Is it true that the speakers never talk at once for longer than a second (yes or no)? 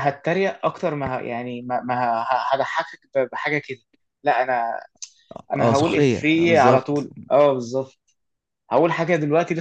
no